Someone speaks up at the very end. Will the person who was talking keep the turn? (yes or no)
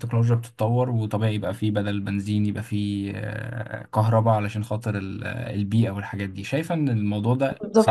no